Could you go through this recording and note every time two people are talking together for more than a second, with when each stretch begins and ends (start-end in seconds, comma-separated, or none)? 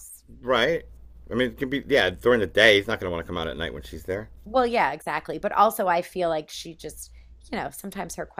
none